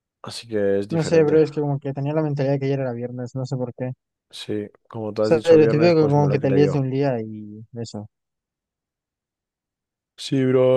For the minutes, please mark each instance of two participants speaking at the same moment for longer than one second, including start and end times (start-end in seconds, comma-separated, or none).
5.2-6.9